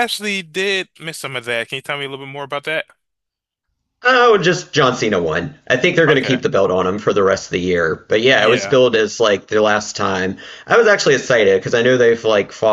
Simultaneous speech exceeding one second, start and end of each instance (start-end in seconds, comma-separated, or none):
none